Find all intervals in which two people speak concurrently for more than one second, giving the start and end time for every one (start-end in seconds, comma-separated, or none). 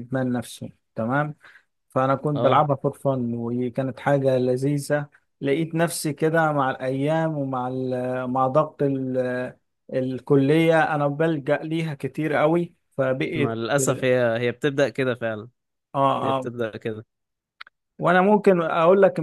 none